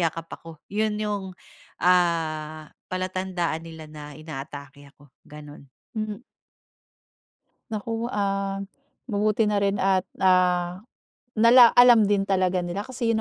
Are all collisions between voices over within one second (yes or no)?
yes